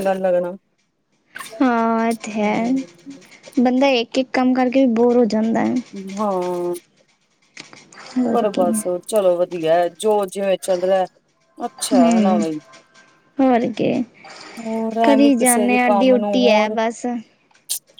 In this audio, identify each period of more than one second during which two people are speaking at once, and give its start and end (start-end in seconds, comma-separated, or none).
15.0-16.8